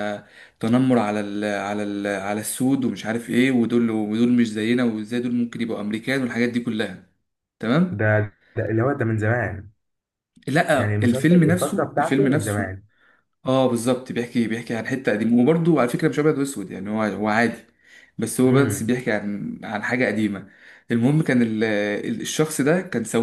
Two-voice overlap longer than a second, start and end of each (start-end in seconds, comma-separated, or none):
10.7-12.7